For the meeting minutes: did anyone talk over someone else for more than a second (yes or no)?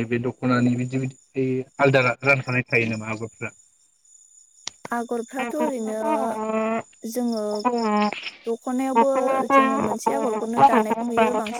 no